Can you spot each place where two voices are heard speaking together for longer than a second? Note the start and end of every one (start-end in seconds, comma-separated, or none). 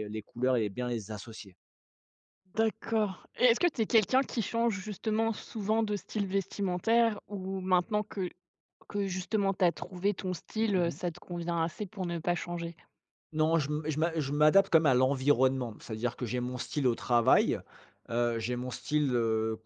none